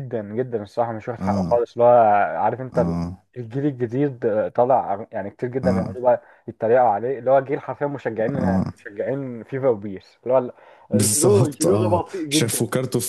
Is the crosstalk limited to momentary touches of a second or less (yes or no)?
no